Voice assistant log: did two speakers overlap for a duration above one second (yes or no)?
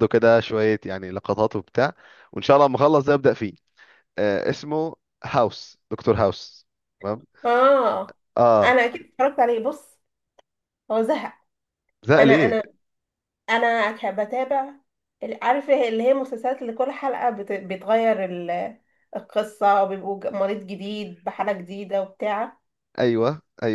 no